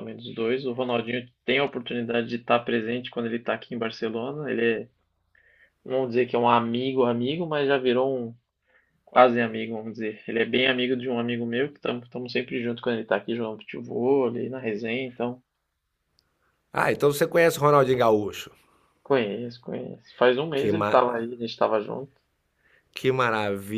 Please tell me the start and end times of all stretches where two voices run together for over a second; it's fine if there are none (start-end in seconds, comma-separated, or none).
none